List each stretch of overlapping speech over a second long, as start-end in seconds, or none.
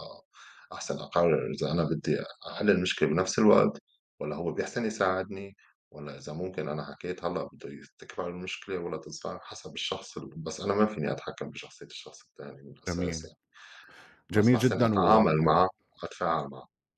14.3-15.6